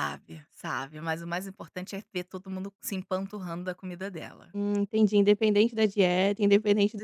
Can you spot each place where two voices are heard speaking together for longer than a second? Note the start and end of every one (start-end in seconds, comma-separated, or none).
none